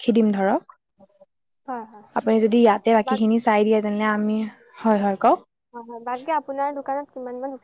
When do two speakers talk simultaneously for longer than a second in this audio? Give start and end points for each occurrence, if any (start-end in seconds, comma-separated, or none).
none